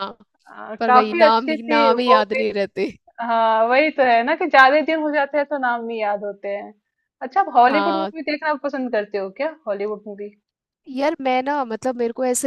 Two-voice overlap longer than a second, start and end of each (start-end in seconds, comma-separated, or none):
0.8-2.4